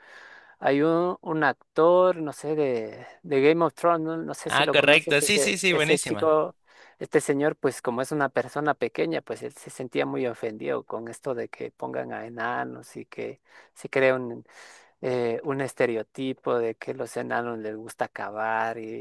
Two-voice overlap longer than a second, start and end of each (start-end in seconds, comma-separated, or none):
4.4-6.3